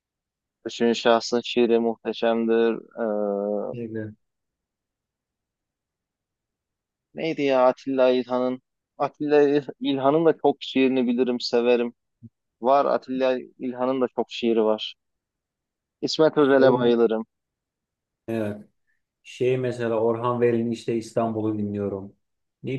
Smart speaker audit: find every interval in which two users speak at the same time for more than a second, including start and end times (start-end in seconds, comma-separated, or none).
none